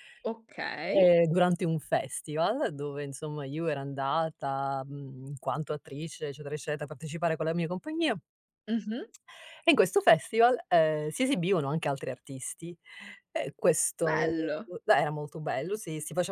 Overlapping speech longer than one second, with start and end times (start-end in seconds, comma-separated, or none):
none